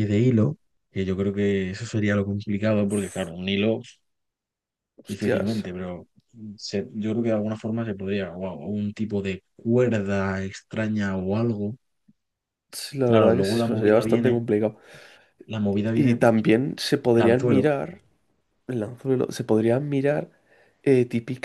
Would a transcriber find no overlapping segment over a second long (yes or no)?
no